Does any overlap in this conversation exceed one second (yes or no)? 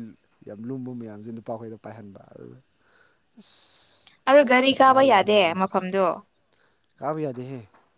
no